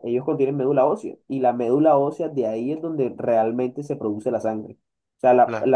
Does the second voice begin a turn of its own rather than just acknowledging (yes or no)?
no